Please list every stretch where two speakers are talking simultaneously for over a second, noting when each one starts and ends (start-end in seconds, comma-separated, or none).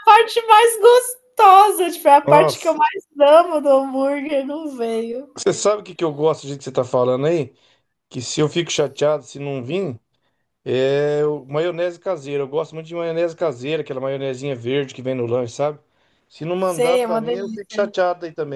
16.6-17.8